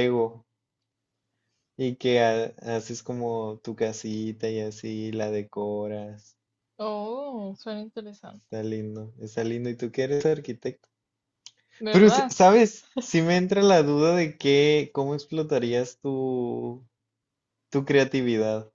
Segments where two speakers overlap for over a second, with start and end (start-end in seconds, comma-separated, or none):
none